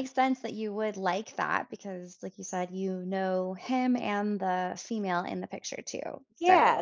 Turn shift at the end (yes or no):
yes